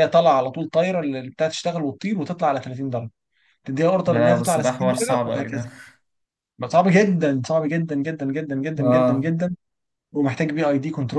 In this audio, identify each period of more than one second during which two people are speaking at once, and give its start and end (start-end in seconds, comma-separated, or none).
4.0-5.6